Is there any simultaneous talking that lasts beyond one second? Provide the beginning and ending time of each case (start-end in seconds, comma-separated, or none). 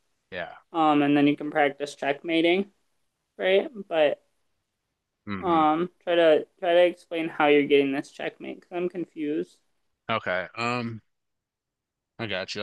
none